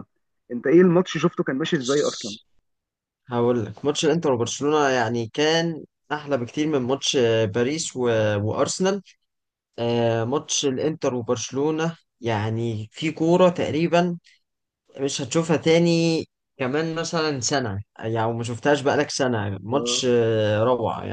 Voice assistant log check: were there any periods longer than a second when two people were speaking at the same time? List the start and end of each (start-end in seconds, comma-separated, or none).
none